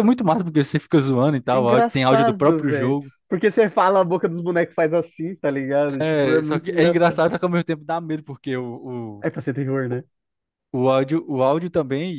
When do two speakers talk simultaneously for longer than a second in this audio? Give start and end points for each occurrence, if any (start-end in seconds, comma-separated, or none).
1.5-3.1, 6.0-7.2